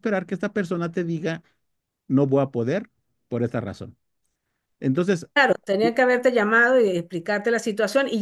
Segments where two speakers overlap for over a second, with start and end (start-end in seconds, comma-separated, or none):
none